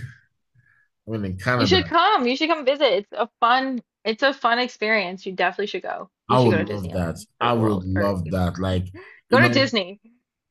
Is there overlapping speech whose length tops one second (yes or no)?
yes